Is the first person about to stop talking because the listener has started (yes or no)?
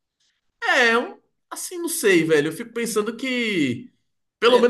yes